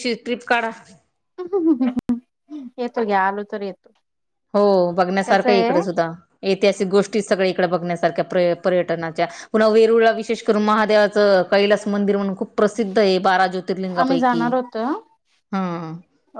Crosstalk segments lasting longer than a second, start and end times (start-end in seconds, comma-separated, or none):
none